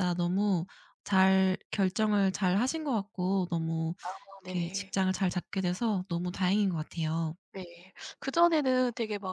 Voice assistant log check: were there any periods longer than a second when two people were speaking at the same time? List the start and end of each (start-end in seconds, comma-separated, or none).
none